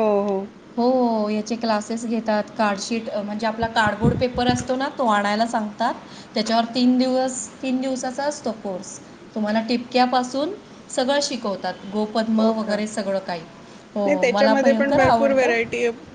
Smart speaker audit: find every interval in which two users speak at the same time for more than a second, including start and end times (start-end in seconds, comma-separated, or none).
14.1-15.5